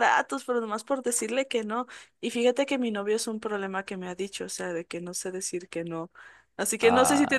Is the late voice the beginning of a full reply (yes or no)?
no